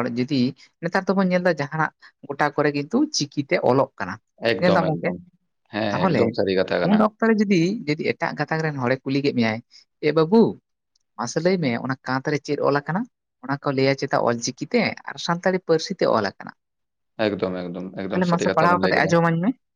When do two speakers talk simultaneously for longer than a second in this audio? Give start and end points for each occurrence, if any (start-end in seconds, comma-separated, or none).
17.3-19.1